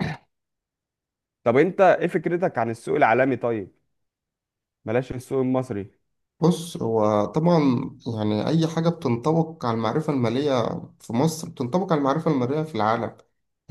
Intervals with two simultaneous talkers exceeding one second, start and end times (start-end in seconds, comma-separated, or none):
none